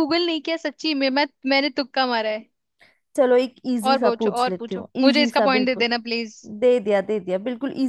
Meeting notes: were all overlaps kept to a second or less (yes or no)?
no